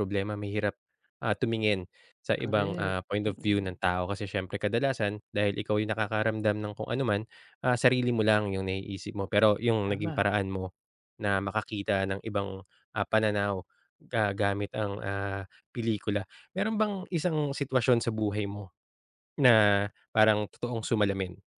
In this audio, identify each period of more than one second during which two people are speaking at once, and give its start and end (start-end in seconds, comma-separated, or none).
2.4-3.8